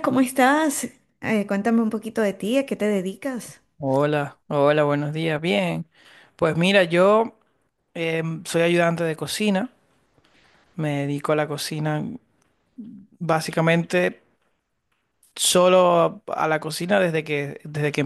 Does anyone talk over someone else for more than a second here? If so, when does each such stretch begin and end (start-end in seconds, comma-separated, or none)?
none